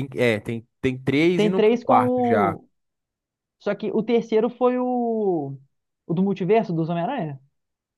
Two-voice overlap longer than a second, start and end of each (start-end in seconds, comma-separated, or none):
1.3-2.6